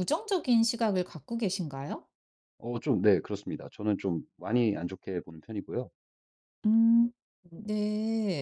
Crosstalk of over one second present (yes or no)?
no